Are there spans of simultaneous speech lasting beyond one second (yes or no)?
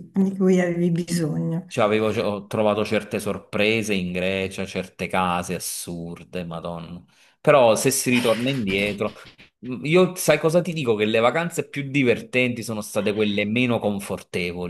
no